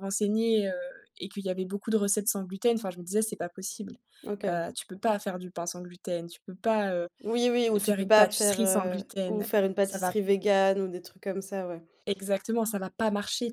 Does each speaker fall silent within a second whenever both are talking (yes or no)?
no